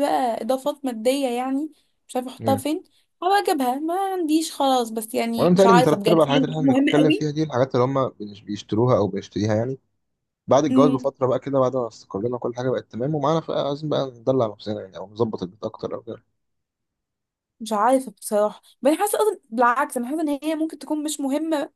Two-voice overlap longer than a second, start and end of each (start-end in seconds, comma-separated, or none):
5.4-6.9